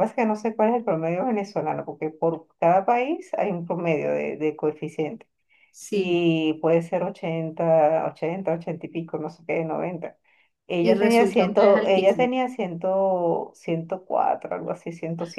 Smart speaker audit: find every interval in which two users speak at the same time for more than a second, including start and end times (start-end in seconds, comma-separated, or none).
10.8-12.3